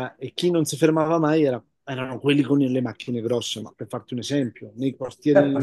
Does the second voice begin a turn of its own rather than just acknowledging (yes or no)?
no